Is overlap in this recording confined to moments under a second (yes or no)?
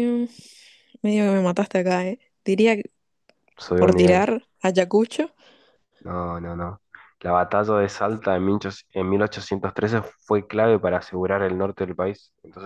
yes